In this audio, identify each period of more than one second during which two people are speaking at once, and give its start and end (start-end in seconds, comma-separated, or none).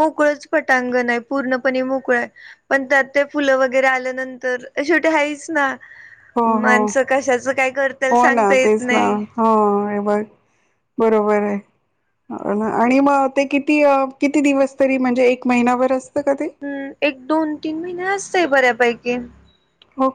none